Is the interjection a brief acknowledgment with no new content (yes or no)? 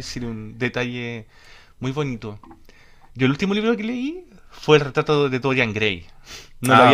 yes